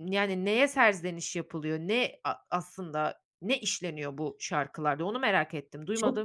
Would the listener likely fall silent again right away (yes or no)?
no